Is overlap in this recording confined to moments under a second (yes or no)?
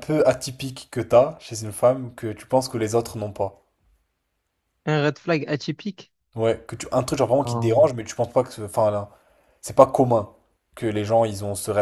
yes